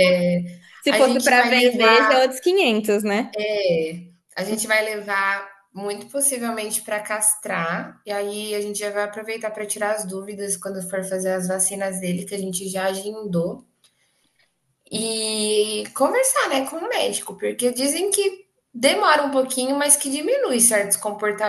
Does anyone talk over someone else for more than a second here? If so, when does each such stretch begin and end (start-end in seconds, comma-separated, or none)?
0.8-2.2